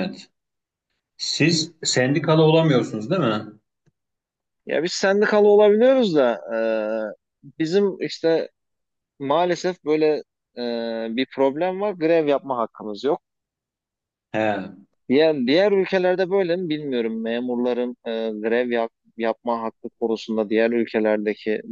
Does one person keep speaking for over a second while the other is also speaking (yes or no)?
no